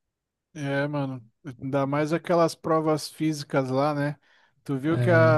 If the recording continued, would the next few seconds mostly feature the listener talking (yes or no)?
no